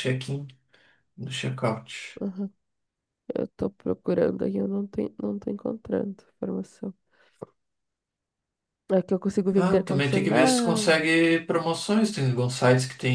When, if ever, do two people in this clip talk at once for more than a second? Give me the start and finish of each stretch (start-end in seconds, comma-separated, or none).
9.6-11.0